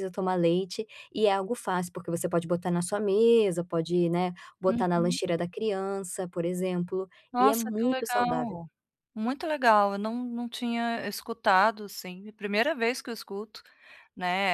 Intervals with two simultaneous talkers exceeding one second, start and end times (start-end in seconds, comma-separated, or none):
7.3-8.6